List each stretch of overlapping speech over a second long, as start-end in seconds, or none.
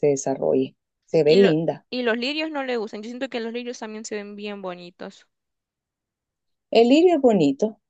none